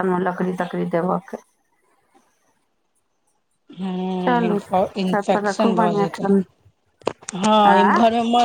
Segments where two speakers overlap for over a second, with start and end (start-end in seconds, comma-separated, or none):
4.2-6.2